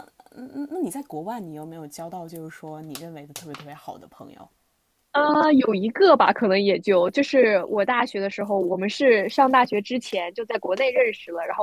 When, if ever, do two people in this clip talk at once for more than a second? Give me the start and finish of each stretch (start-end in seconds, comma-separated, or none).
none